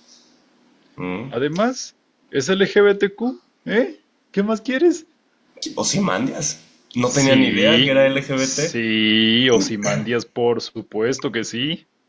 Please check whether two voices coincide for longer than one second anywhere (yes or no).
yes